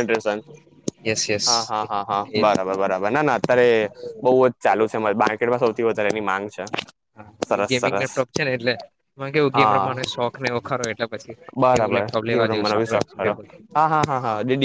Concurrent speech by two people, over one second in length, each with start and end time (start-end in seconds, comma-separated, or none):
11.8-13.3